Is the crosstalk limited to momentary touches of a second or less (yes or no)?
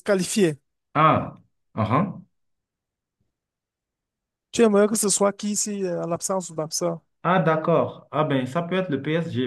yes